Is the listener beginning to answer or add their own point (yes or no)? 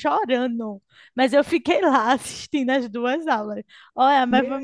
yes